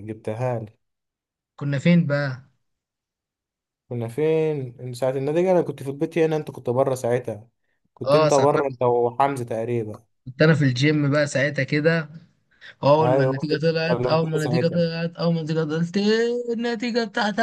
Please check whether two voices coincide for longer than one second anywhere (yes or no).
yes